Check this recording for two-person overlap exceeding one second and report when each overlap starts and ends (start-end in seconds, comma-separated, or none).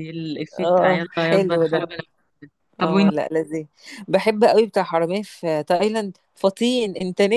0.6-1.9